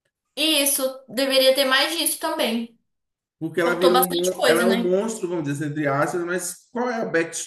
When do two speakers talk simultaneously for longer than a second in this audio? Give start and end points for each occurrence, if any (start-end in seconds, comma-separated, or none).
3.6-5.0